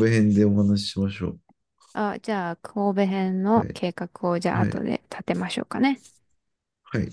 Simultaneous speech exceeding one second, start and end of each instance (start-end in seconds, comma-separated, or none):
none